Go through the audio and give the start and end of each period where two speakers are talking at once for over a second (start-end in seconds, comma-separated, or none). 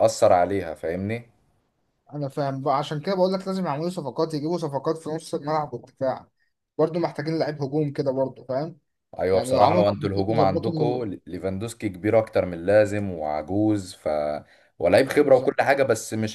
9.3-11.0